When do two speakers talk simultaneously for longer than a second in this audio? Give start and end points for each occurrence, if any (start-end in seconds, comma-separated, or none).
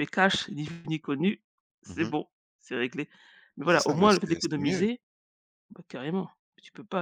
3.6-4.9